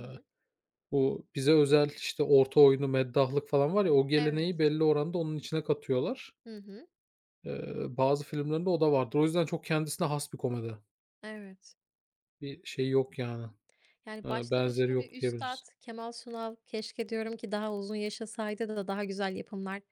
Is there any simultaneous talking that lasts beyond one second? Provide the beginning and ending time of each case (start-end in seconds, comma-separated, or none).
14.2-15.6